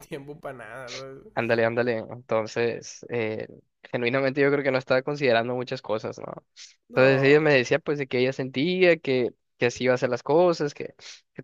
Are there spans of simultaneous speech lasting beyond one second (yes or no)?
no